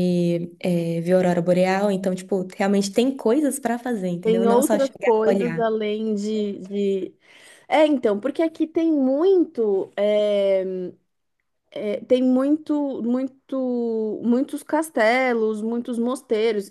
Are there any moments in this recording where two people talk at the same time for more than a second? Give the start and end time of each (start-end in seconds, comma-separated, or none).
4.2-5.7